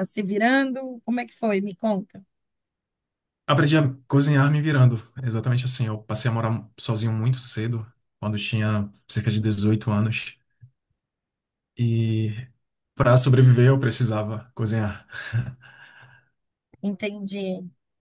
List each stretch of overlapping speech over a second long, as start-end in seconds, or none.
none